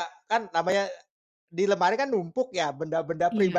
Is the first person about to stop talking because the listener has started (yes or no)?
no